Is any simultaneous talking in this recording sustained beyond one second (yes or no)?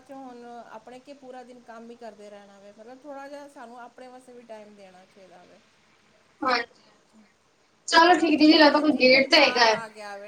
yes